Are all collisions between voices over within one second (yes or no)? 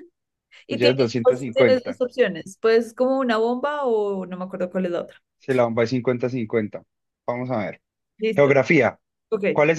no